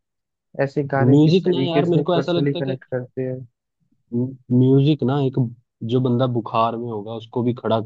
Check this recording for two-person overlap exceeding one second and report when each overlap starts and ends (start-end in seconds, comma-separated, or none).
1.1-2.8